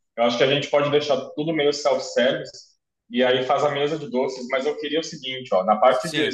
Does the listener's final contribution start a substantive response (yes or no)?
no